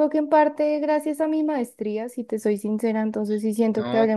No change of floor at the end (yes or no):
no